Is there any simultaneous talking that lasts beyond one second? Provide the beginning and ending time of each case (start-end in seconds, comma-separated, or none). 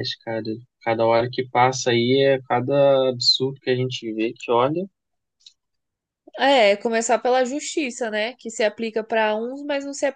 none